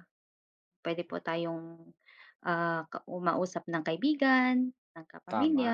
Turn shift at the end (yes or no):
no